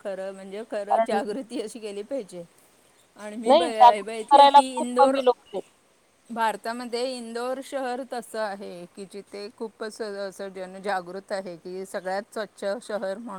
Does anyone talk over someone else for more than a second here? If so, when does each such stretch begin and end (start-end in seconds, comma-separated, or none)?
3.5-5.2